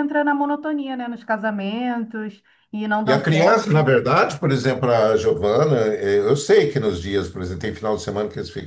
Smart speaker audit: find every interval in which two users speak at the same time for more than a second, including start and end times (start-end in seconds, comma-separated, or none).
none